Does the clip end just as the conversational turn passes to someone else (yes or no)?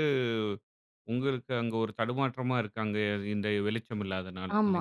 yes